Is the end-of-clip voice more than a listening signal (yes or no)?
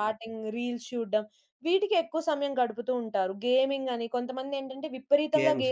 no